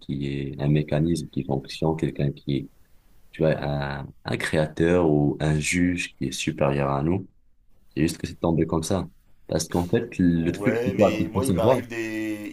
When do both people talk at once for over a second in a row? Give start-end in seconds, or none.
10.3-11.8